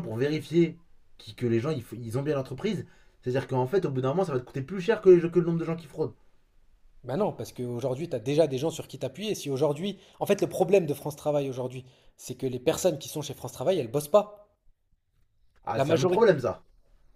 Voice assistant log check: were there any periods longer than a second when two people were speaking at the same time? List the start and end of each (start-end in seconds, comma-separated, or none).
none